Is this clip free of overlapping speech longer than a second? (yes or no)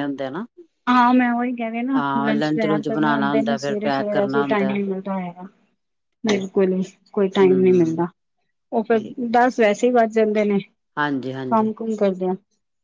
no